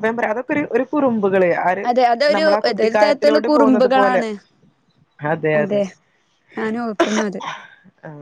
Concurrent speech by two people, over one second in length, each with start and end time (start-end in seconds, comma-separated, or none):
2.4-4.2